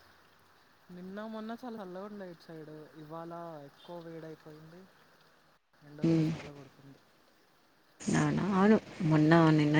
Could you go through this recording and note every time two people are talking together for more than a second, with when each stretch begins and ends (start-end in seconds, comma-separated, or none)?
none